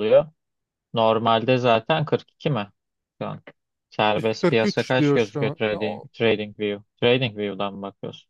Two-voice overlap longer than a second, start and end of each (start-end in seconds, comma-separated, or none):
4.1-6.1